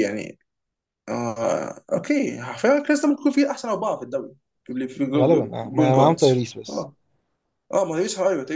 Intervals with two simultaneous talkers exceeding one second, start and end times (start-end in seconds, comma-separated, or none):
5.2-6.9